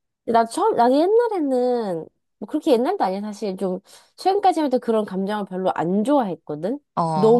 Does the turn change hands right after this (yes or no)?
no